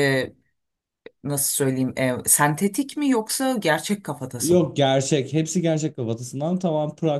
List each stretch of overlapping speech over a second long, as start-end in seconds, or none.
none